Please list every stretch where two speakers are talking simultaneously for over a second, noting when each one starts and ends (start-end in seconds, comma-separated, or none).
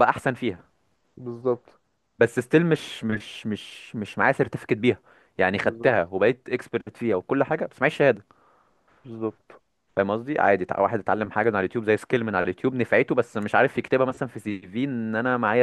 none